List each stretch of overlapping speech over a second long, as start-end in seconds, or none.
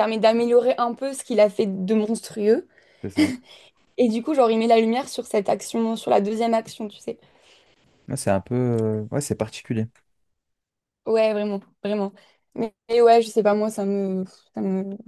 none